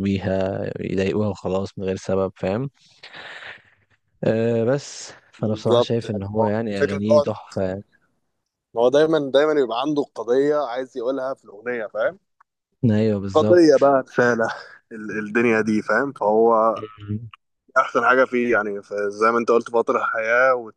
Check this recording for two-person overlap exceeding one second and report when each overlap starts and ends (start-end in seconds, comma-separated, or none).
5.4-7.3